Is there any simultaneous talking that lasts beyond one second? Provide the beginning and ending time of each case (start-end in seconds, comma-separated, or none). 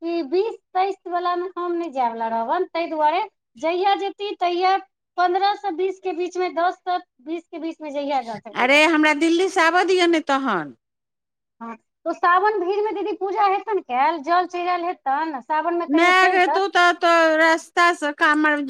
none